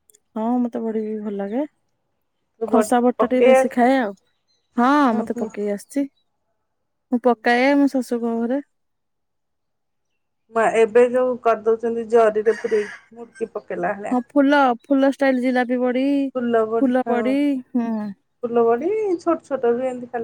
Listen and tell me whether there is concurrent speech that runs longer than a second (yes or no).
no